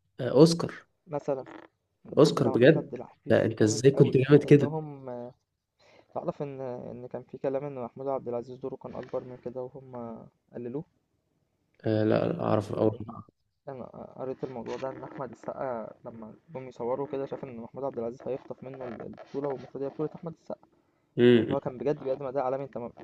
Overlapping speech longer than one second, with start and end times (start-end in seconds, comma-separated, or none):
2.2-4.7